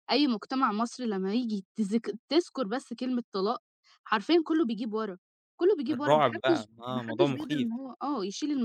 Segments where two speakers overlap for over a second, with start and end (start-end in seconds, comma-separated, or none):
5.9-7.7